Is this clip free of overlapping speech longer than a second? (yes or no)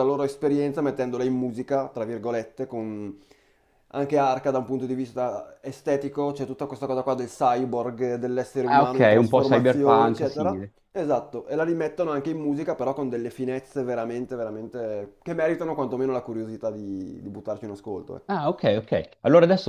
no